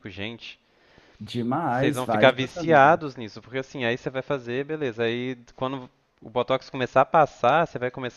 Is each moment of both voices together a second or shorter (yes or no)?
no